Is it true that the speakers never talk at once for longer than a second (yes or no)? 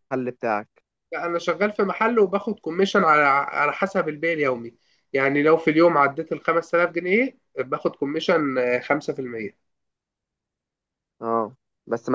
yes